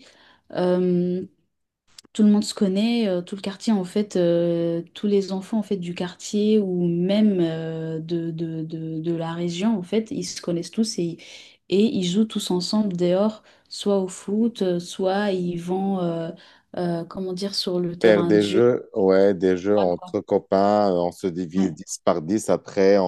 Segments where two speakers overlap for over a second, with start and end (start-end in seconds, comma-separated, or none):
none